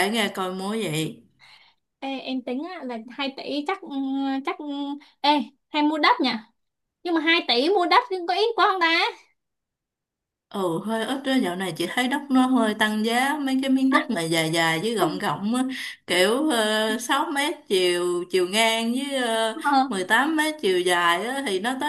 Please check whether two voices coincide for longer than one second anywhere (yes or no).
no